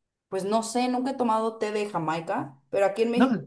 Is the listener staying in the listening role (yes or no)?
yes